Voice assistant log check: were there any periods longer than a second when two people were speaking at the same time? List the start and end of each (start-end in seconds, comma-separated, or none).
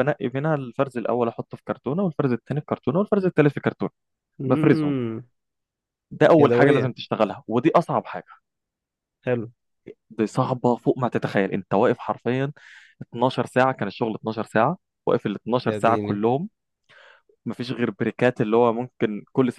none